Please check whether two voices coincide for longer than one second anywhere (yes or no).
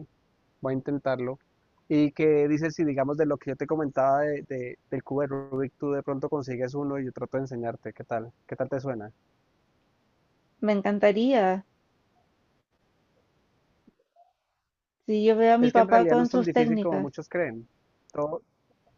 yes